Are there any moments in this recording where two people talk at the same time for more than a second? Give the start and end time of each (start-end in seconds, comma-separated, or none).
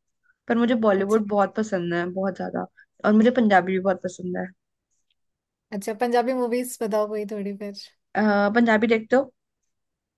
none